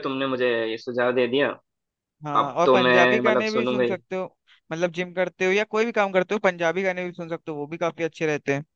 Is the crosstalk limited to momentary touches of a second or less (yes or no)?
no